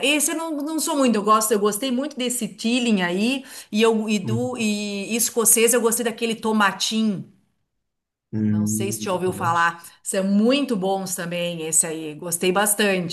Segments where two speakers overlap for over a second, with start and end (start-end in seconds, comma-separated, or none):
8.4-9.7